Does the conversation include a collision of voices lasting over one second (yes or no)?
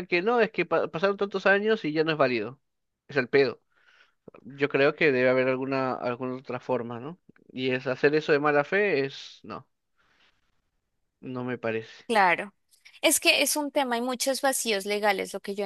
no